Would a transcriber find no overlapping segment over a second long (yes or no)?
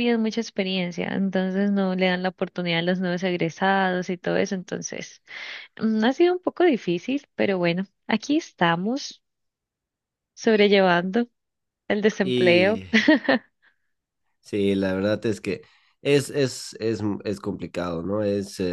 yes